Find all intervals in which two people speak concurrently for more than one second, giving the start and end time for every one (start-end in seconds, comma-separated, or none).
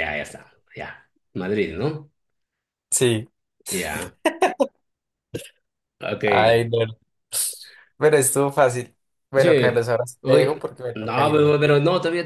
10.2-11.6